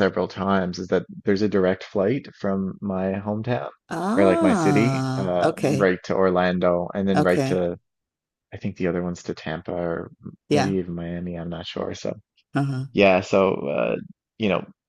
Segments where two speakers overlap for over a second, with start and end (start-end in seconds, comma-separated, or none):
4.2-5.9